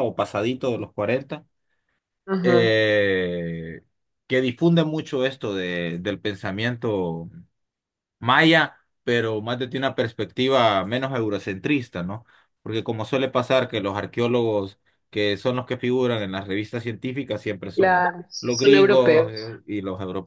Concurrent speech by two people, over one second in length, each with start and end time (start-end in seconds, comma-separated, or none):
17.8-19.6